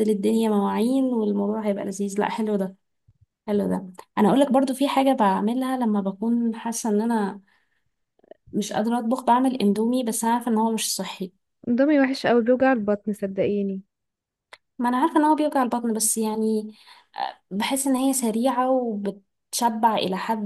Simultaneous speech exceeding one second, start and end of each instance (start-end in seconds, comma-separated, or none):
none